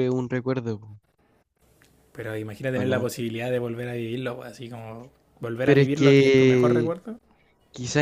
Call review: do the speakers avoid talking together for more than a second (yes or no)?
no